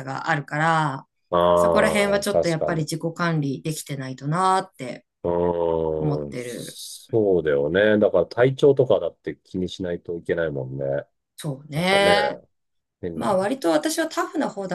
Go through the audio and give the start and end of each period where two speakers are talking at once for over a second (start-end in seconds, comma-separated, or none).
1.5-2.9